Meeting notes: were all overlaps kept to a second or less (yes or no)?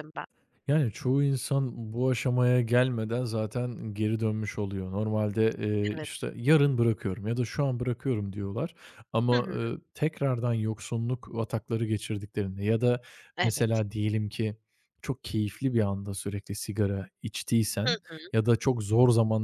yes